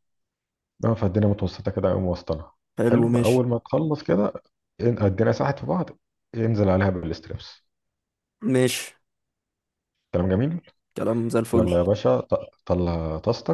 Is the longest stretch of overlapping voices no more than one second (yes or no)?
yes